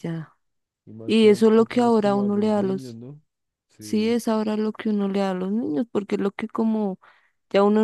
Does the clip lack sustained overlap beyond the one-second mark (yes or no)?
no